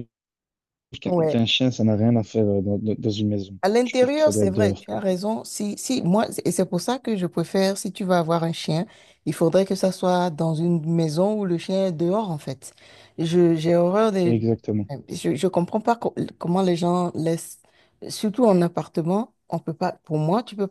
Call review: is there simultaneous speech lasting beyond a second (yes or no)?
yes